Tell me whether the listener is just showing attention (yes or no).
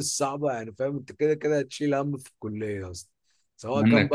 yes